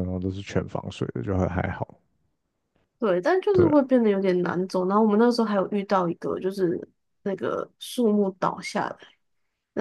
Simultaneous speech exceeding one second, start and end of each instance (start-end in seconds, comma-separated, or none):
none